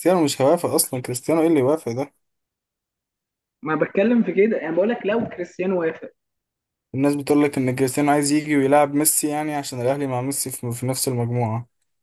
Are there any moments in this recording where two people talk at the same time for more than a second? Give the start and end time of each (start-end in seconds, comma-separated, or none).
none